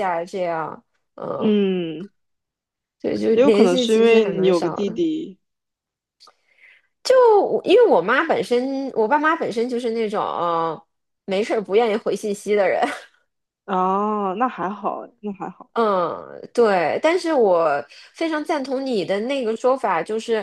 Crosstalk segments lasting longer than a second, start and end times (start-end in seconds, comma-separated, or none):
3.3-5.0